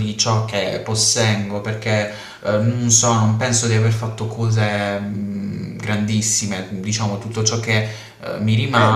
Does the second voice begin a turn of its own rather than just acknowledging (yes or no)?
yes